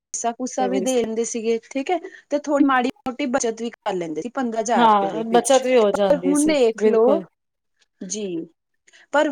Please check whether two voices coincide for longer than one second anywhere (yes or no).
yes